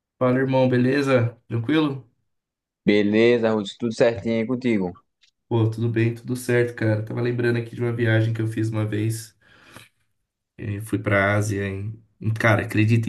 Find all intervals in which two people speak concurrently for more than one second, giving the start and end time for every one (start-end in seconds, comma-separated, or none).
none